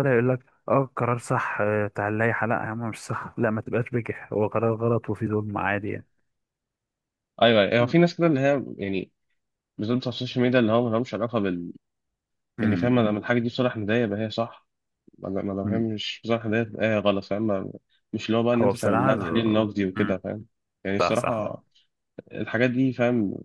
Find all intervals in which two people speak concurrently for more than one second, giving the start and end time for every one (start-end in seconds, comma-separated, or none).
18.6-20.2